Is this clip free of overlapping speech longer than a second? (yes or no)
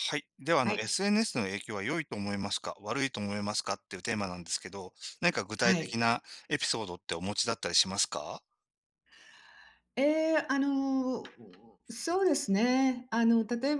yes